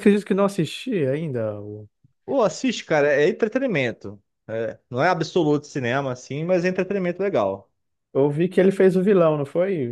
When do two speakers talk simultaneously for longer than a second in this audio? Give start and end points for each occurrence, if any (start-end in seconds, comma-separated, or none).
none